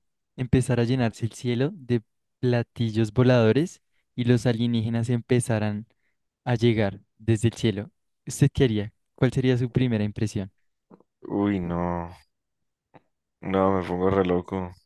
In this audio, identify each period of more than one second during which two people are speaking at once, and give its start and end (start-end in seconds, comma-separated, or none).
none